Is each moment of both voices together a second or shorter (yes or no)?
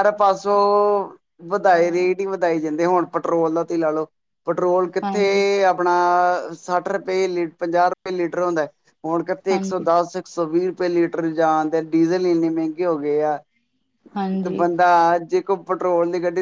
yes